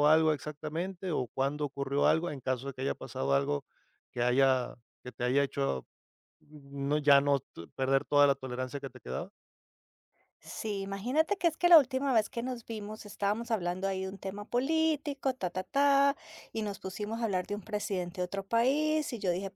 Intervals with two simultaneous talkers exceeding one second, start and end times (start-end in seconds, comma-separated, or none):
none